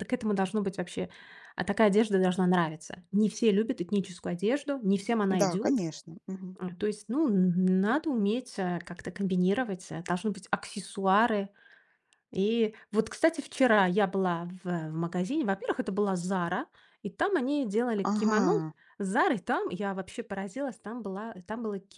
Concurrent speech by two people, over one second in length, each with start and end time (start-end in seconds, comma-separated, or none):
none